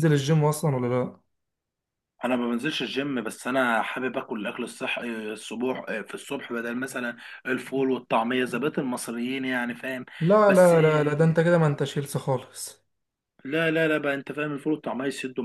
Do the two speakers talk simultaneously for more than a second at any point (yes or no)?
no